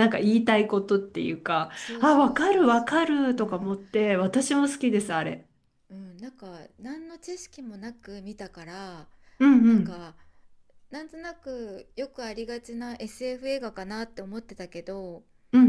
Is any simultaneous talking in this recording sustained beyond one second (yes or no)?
yes